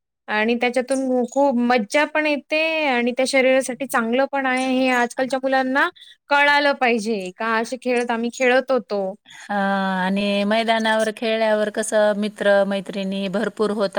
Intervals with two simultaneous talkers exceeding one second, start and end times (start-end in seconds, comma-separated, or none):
none